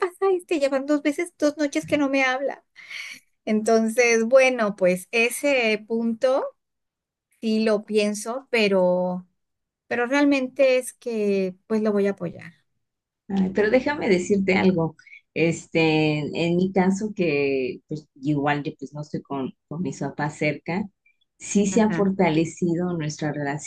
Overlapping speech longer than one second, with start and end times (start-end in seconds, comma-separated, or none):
none